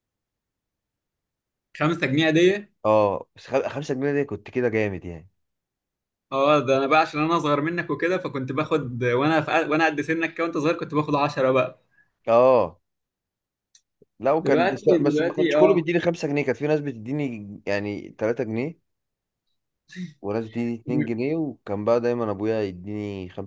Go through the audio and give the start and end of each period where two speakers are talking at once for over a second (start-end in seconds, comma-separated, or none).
14.4-15.9